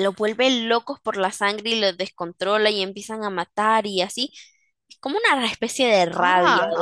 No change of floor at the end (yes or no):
no